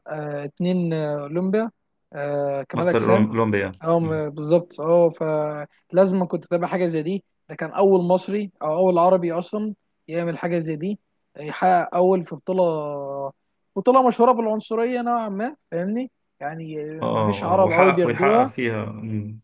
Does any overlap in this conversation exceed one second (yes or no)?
yes